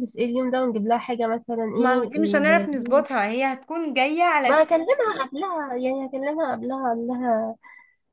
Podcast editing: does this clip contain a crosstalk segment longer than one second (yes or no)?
yes